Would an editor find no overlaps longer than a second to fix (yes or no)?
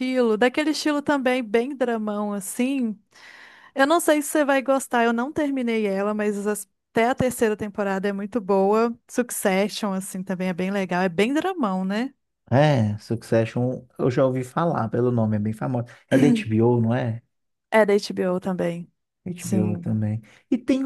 yes